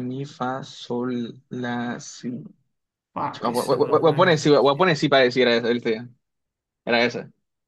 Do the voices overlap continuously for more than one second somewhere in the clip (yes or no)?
yes